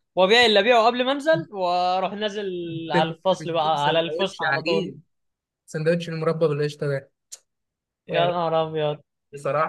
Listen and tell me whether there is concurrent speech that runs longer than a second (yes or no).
yes